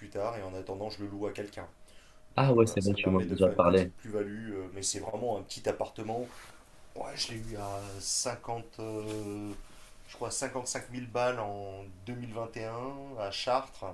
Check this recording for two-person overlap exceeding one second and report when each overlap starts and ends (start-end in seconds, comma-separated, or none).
2.4-3.9